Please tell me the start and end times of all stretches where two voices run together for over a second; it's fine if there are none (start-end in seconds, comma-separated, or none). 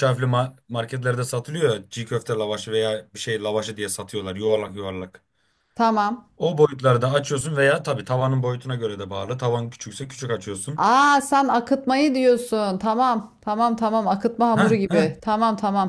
none